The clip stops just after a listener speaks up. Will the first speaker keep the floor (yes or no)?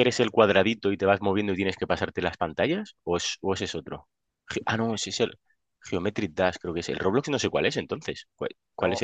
no